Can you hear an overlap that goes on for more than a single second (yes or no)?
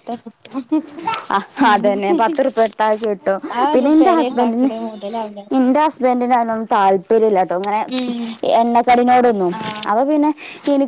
no